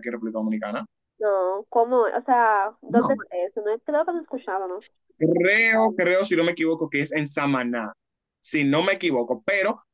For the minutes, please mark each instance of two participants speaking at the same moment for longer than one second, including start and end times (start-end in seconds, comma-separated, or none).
none